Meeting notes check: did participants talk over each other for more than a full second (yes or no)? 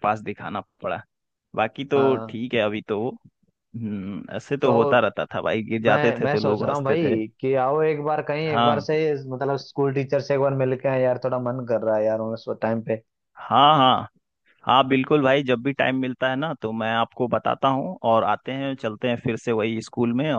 yes